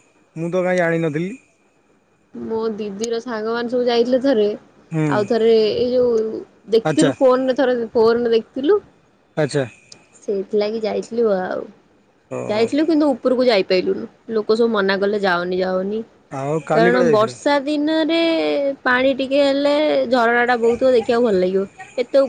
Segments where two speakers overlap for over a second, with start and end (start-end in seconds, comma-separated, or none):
none